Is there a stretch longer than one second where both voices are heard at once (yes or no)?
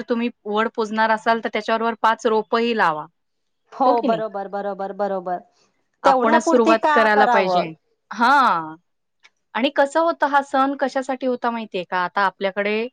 yes